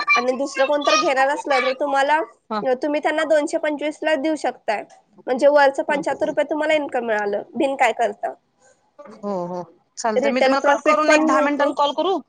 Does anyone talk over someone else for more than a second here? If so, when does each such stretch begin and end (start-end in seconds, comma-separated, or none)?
10.2-11.7